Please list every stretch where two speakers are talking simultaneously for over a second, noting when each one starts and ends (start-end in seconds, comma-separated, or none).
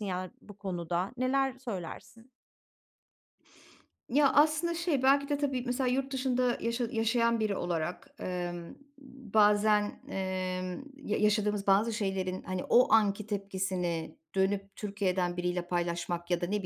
none